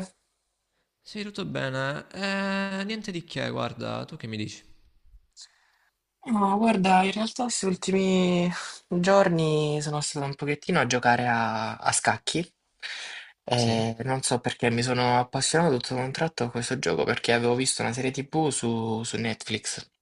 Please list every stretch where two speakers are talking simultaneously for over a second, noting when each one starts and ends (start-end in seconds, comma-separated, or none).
none